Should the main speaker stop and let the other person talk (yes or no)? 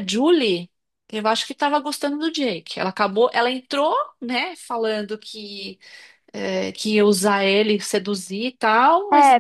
yes